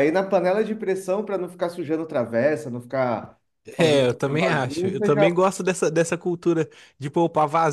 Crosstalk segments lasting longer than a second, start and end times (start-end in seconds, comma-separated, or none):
3.8-5.3